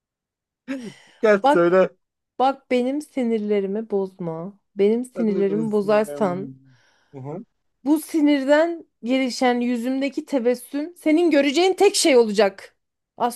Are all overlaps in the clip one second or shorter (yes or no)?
no